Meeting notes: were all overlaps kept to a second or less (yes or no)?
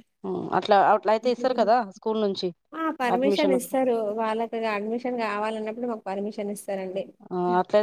yes